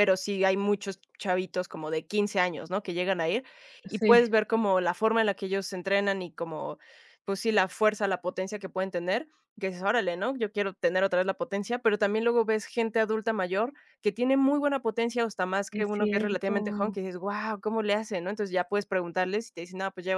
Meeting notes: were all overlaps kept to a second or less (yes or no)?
no